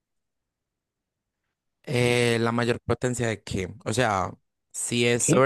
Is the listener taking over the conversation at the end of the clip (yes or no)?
no